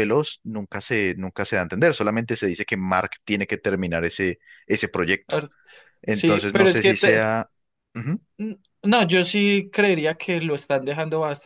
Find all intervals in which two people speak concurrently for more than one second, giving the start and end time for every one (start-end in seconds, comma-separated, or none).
6.1-7.3